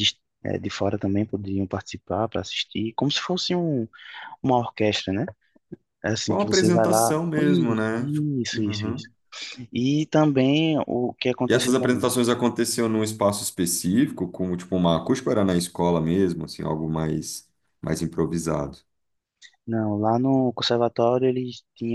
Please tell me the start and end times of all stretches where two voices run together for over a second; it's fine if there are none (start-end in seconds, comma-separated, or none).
6.3-9.1